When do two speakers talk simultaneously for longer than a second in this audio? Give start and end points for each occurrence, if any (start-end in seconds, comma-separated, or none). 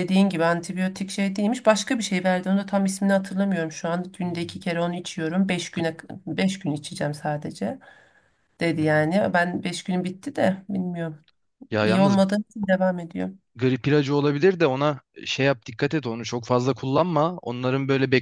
none